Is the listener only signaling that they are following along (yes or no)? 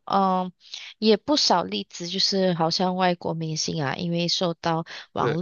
yes